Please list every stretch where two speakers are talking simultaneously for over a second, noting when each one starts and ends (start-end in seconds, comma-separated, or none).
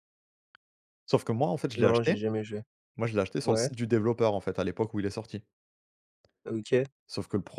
none